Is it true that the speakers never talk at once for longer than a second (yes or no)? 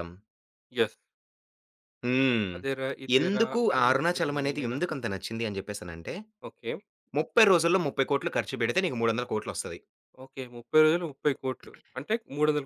no